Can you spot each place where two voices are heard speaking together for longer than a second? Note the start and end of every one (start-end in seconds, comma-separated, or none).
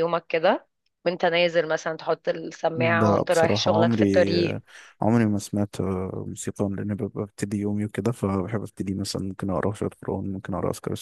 2.7-4.3